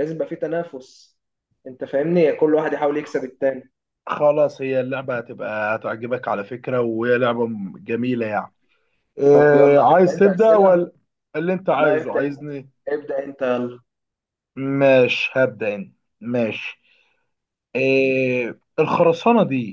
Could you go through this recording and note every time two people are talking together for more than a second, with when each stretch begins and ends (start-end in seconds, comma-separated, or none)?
9.3-10.8